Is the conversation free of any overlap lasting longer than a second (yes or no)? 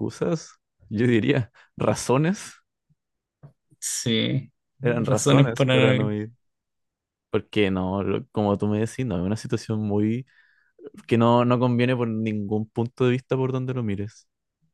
no